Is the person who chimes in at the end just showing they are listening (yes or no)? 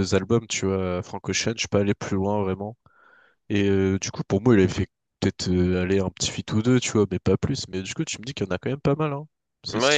no